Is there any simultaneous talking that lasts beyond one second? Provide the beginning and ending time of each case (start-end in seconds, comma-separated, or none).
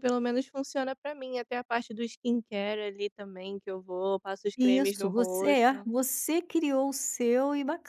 4.6-5.9